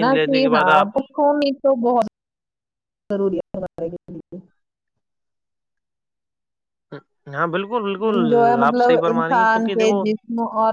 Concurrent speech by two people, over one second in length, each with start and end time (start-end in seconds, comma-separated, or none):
8.1-10.0